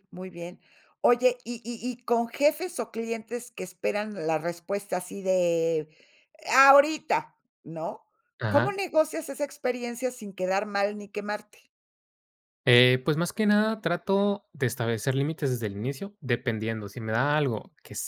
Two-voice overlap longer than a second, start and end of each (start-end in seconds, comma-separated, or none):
none